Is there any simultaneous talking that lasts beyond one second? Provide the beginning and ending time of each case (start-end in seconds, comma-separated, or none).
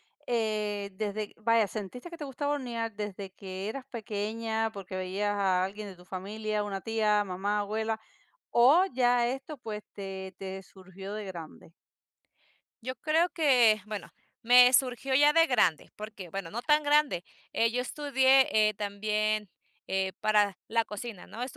none